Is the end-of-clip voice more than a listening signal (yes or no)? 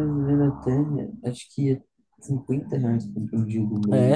yes